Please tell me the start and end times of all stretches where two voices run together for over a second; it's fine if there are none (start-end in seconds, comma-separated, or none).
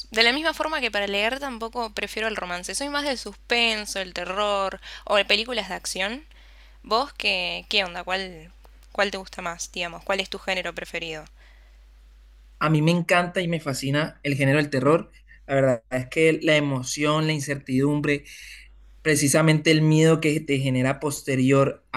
none